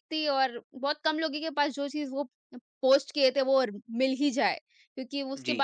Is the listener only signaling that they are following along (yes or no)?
yes